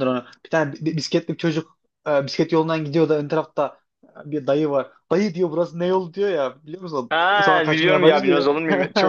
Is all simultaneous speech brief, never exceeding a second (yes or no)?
no